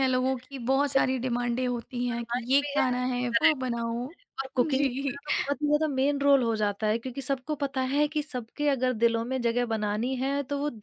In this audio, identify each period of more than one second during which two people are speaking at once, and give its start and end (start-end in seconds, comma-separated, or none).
2.1-3.6